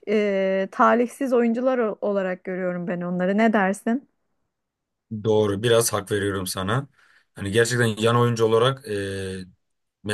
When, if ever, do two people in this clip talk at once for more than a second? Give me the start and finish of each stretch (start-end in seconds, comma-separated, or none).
none